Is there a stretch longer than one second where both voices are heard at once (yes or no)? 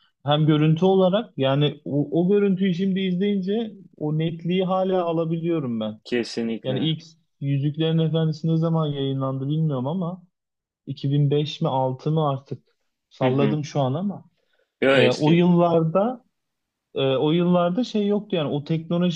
no